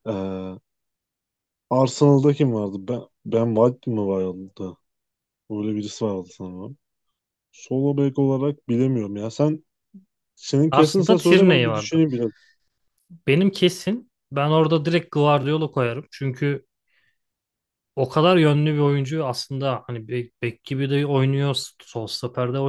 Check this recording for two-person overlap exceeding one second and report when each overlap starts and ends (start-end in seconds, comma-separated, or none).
10.7-12.0